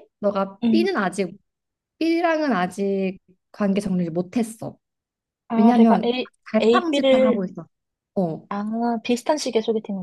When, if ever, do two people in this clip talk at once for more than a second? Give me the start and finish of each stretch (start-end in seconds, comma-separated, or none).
5.5-7.4